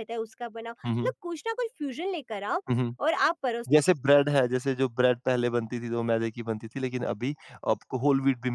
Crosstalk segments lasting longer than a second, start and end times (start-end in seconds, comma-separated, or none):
none